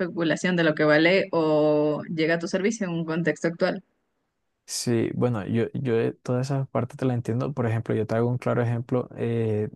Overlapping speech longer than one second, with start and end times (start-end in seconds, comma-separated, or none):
none